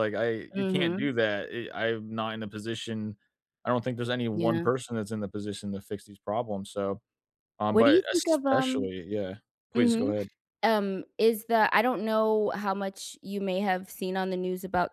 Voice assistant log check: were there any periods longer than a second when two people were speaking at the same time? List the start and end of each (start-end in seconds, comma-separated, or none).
7.7-8.9